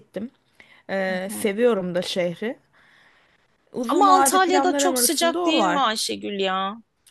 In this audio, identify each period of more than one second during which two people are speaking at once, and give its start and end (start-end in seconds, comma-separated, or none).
3.9-5.8